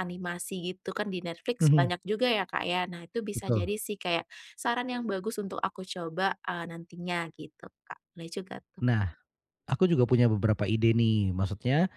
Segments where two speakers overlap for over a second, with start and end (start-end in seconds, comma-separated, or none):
none